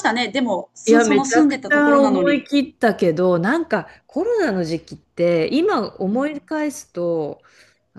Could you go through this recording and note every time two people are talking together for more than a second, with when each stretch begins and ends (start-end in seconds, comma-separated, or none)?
0.8-2.5